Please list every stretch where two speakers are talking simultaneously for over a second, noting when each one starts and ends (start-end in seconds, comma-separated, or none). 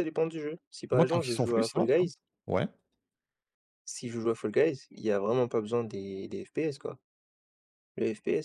0.9-2.1